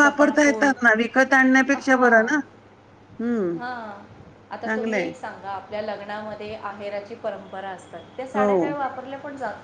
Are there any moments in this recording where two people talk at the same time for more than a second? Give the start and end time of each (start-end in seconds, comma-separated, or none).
none